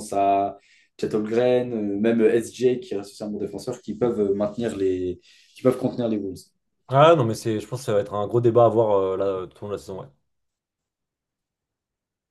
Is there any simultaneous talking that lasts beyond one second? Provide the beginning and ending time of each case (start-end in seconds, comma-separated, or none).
none